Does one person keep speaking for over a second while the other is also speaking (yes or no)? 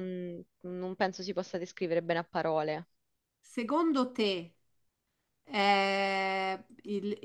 no